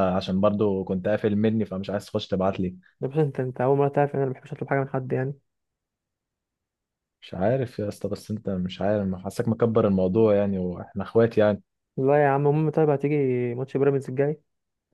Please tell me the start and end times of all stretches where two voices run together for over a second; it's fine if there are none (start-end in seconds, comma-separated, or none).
none